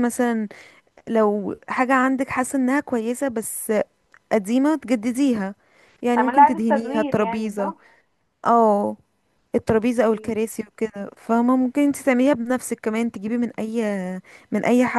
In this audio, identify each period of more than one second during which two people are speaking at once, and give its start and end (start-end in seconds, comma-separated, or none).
6.2-7.7